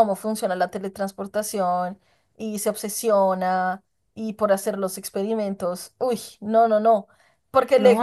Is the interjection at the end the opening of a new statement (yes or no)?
no